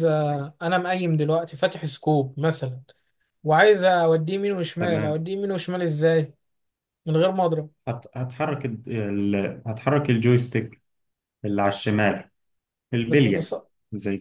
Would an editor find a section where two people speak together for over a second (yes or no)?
no